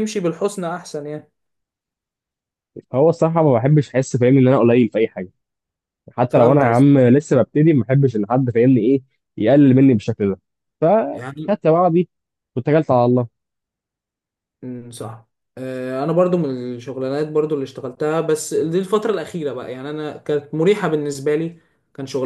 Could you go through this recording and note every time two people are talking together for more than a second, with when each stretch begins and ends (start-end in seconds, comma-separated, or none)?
none